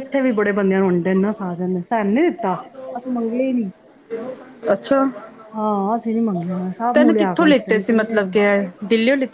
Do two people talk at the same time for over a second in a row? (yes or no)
yes